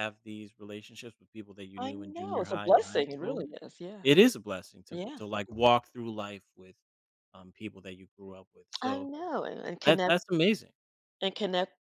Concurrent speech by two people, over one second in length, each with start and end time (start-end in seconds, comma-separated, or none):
1.8-3.4